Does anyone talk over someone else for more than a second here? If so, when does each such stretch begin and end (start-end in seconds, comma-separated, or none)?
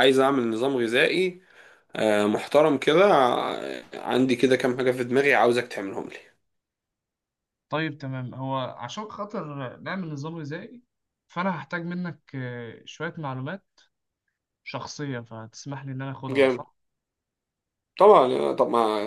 none